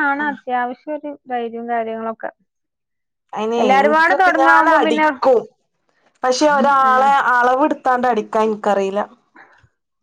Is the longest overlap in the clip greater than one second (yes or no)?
yes